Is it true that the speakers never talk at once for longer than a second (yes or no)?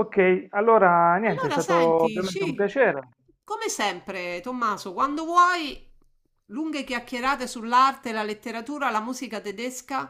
no